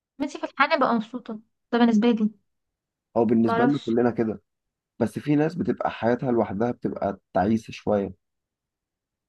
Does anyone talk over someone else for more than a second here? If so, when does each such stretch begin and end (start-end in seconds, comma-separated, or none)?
none